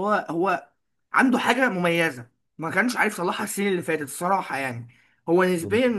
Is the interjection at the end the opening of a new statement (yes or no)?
no